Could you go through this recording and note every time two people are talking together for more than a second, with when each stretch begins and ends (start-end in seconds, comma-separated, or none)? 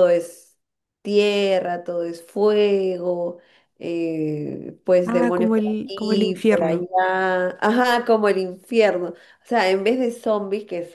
5.0-6.9